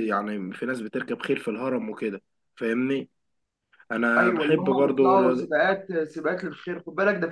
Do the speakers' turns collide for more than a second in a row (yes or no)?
yes